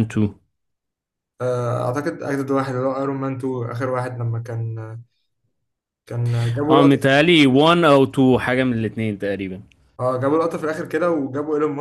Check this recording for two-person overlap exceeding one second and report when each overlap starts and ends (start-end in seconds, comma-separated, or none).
none